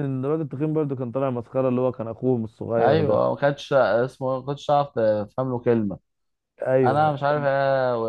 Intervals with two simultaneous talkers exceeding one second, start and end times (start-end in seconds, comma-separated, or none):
none